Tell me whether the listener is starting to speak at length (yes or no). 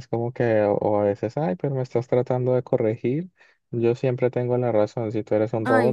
no